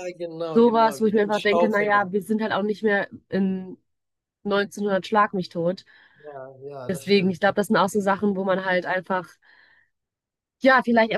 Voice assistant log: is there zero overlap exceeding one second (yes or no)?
no